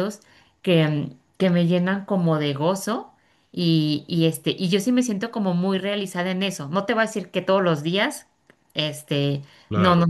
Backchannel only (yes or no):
yes